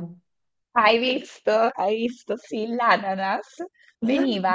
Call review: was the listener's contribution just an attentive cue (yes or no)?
yes